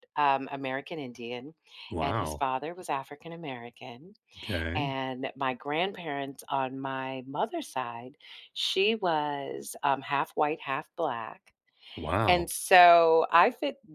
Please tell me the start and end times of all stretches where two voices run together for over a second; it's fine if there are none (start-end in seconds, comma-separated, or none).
none